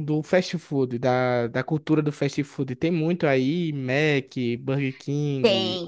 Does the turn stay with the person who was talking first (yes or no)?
no